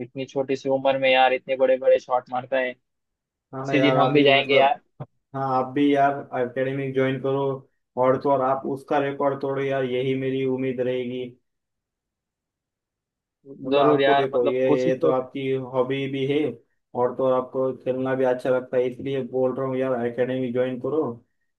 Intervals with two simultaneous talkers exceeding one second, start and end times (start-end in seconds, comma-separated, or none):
3.5-4.8, 13.7-15.2